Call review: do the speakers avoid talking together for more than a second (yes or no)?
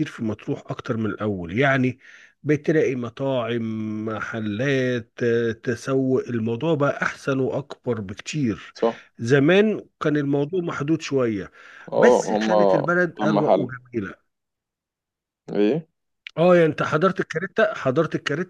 no